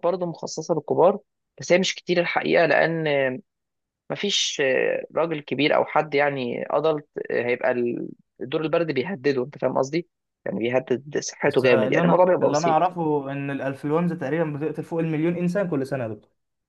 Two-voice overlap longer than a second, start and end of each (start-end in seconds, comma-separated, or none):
11.4-12.9